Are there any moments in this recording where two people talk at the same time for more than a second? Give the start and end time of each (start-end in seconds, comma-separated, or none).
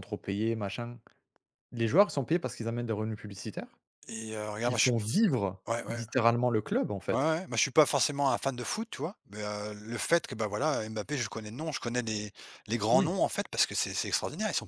none